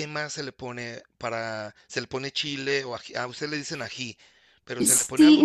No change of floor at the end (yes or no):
no